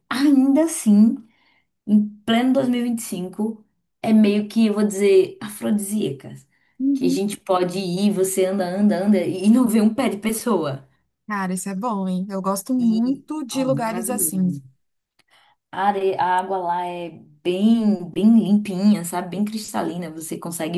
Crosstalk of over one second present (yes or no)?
yes